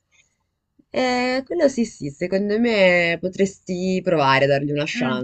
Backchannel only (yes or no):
no